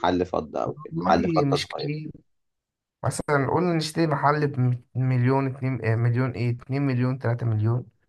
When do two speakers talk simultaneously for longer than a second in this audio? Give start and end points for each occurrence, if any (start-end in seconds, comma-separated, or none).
0.7-1.9